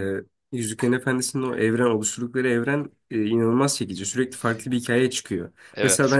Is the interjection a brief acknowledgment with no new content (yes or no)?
yes